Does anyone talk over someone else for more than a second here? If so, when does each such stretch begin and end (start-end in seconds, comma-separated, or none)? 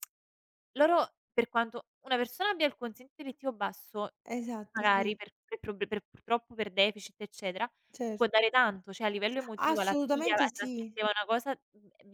9.6-10.9